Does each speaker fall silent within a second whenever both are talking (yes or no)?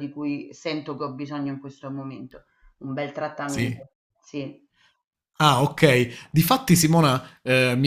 yes